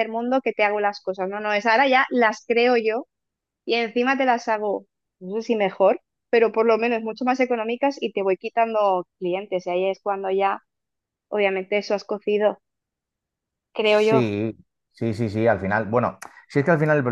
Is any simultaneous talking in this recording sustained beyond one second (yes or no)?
no